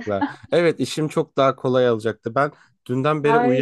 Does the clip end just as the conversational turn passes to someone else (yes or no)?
yes